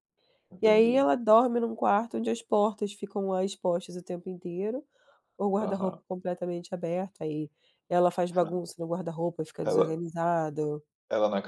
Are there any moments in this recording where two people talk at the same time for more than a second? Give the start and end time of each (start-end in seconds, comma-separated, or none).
none